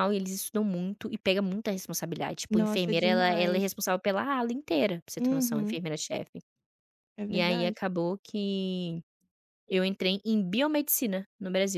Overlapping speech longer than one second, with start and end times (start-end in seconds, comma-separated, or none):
2.5-3.8